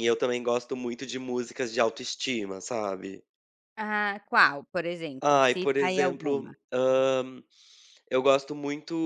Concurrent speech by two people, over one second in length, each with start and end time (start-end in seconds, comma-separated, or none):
5.2-6.5